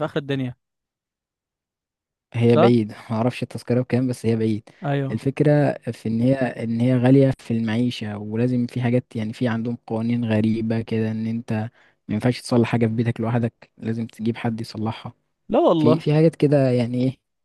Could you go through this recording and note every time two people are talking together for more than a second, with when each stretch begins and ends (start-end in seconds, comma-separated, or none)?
none